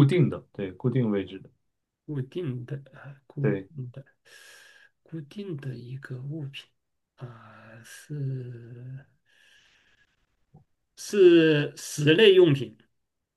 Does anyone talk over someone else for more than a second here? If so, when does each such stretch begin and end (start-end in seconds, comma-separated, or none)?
none